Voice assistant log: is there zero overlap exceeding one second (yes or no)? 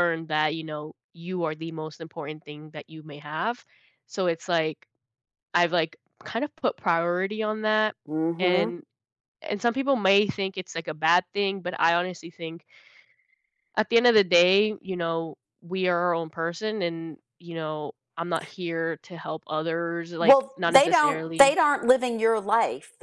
no